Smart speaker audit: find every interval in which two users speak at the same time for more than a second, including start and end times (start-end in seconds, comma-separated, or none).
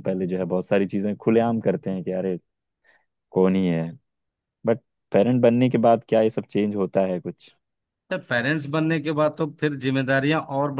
none